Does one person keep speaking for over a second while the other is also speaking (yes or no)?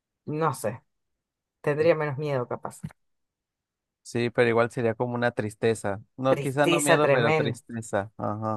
yes